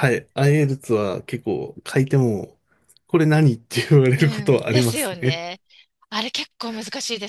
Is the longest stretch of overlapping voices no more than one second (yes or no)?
no